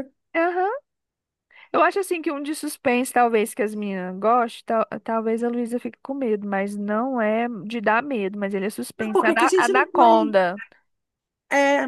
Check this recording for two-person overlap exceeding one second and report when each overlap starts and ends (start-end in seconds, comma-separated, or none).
9.0-10.4